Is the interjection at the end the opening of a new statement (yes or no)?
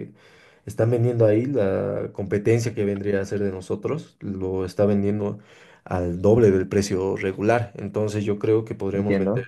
no